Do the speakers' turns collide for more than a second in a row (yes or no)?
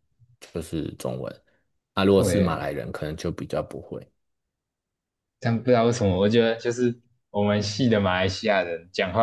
no